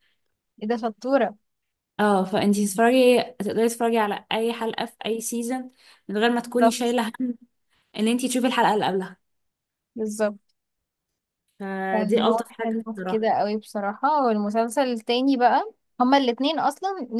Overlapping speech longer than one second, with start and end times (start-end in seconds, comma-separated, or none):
11.9-13.3